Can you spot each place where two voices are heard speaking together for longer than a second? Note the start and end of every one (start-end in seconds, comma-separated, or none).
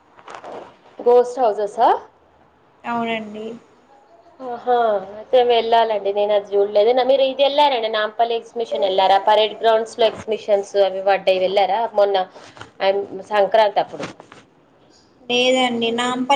none